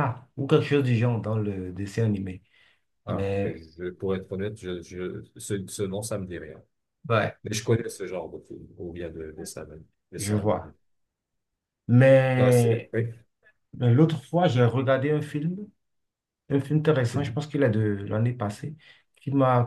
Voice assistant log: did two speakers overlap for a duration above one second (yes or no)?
no